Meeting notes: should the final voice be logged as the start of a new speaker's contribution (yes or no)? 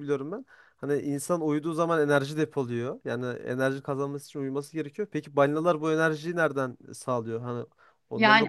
yes